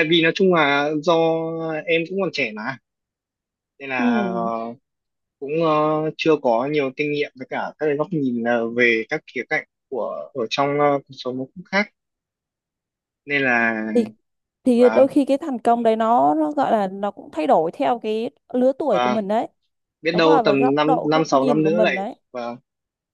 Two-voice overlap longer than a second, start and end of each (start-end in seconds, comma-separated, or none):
20.1-22.1